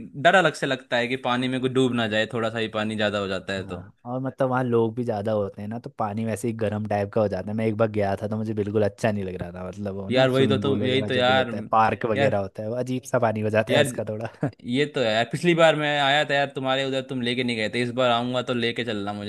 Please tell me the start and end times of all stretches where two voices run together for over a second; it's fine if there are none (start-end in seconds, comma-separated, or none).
10.1-11.5